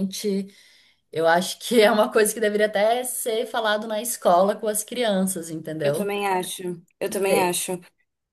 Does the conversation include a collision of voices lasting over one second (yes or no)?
no